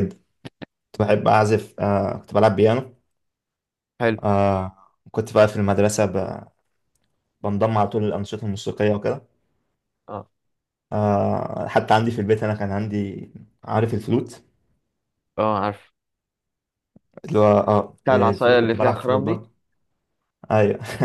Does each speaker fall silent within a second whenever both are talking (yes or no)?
no